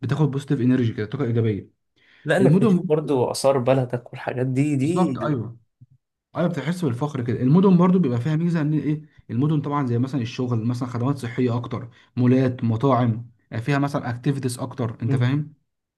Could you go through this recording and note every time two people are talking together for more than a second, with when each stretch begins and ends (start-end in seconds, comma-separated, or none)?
none